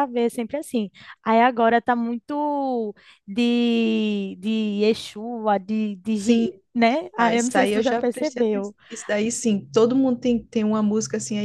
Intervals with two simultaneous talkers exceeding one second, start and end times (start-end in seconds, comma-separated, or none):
7.2-8.7